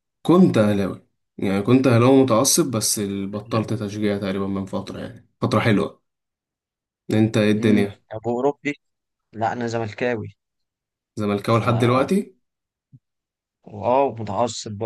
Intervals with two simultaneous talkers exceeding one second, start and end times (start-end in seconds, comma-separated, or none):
none